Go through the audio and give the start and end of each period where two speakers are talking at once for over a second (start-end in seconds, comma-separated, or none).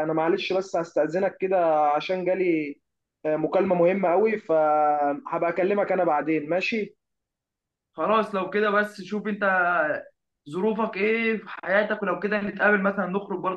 none